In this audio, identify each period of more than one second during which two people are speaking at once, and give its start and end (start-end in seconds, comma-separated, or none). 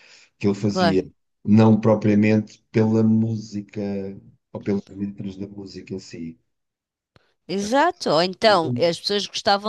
none